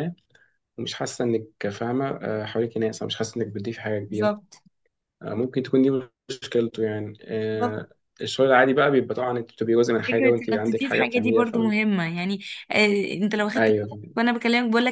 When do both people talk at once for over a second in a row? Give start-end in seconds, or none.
10.1-11.7